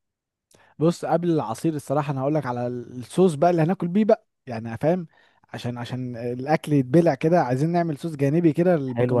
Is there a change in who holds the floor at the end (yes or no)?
yes